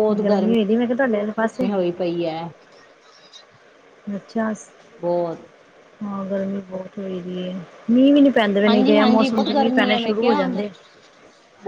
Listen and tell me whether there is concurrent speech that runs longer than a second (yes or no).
yes